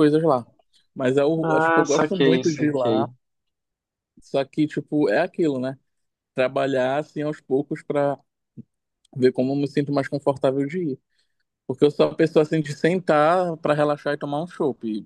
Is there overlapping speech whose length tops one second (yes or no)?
yes